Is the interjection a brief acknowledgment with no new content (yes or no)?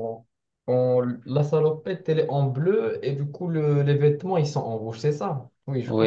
no